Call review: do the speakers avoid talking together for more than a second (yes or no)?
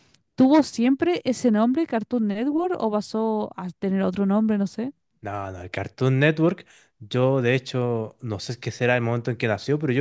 yes